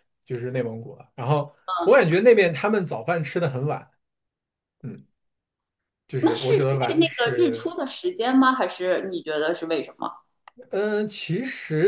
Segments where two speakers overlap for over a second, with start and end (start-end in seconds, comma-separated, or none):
6.2-7.7